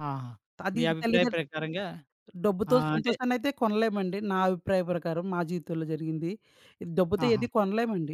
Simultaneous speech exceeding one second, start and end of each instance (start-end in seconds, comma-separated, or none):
none